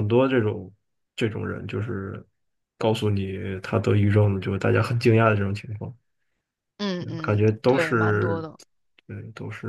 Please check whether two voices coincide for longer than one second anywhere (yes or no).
yes